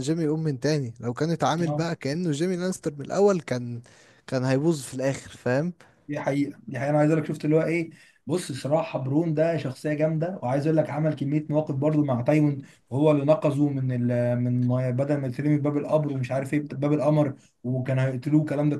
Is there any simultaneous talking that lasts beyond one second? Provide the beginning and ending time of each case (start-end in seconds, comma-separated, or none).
none